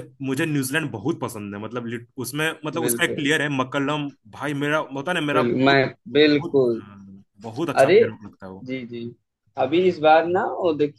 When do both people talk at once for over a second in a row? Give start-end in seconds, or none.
5.3-6.8